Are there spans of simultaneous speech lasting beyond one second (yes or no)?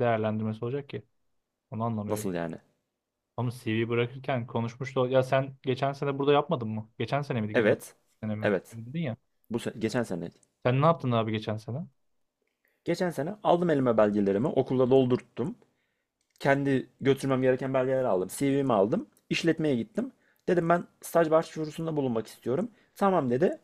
no